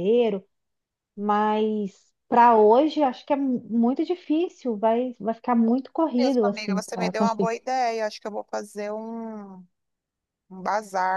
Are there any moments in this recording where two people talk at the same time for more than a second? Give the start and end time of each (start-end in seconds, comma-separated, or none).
6.2-7.5